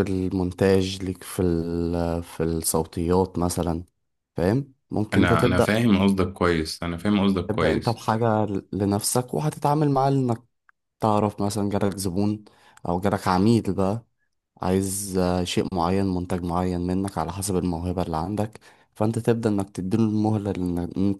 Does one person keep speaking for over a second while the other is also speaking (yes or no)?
no